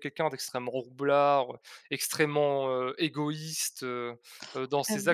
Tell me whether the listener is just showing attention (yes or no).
no